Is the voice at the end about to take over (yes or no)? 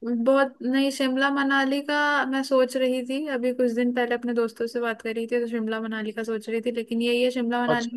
no